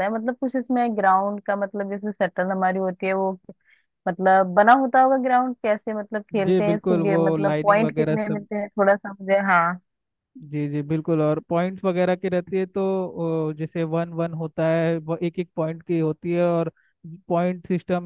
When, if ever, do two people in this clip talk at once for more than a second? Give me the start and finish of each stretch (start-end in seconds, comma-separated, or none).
6.5-8.5